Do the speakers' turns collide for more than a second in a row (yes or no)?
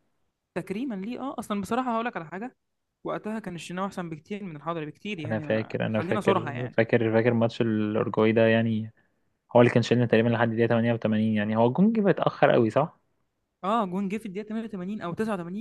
yes